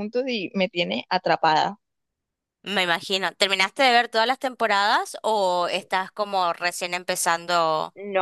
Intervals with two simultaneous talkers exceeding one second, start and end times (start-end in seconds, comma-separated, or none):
none